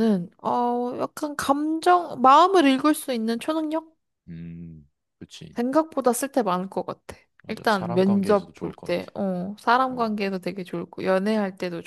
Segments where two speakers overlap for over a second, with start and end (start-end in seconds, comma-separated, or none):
7.4-9.1